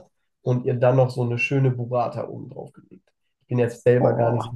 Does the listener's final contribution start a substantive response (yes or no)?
no